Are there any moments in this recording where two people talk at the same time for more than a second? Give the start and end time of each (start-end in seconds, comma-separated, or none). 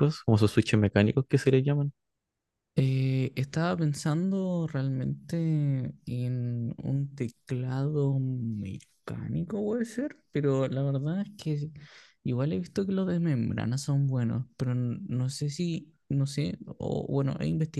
none